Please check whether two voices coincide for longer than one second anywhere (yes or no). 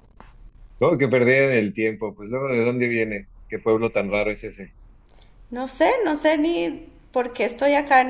no